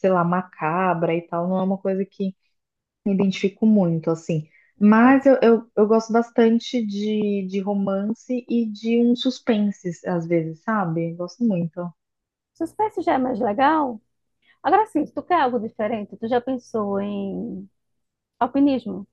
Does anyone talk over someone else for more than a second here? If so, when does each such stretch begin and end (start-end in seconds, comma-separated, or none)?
none